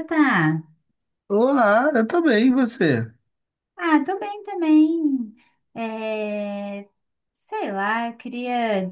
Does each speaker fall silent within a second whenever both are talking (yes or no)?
yes